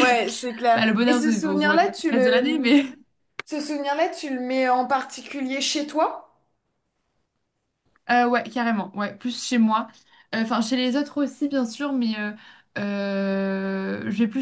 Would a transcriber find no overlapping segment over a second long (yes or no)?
no